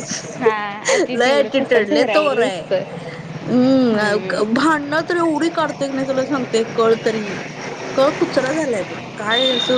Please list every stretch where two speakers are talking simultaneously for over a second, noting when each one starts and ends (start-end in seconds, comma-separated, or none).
1.1-2.6